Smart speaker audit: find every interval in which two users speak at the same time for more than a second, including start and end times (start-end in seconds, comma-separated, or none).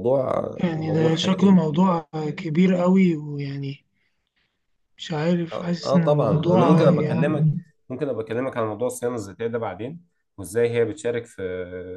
5.5-7.5